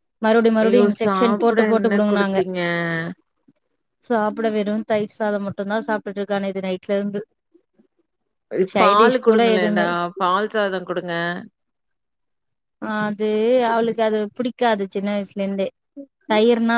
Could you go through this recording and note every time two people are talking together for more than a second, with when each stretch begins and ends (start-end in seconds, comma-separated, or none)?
0.6-2.4